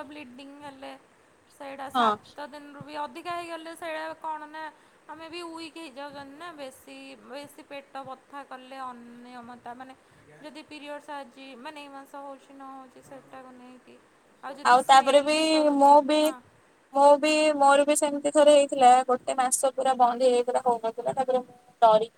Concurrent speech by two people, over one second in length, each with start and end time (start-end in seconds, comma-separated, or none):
none